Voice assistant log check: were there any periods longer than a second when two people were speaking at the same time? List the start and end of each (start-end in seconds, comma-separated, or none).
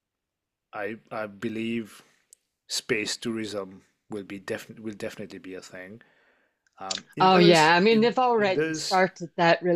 7.2-9.0